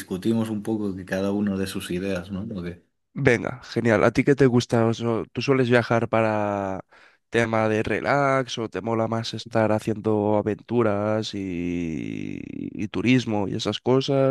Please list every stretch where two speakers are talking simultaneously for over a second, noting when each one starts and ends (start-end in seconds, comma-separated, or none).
none